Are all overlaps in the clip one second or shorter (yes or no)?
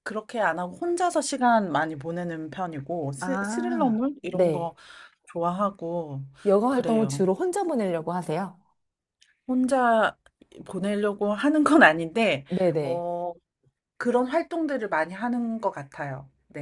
no